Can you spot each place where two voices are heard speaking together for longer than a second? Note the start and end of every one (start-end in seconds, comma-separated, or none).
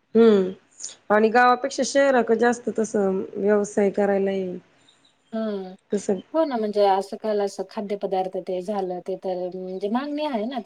none